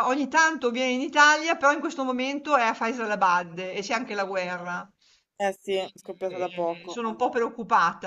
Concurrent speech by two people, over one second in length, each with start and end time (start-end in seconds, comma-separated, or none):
5.7-7.4